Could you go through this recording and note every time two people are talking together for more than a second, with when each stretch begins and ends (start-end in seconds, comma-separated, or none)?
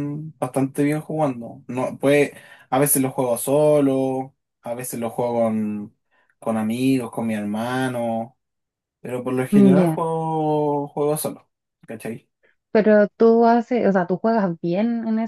none